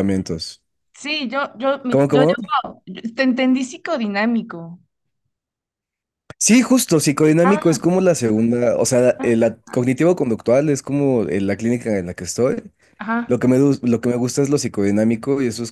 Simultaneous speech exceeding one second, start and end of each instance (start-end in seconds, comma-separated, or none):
none